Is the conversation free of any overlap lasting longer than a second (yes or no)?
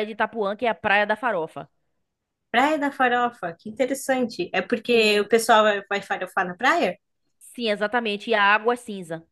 yes